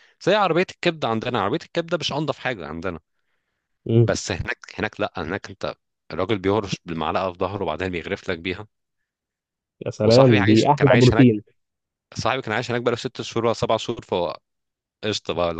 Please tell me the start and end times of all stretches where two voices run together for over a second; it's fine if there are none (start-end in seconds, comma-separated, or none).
10.0-11.3